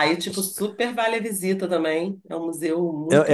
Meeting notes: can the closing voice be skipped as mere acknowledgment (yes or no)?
no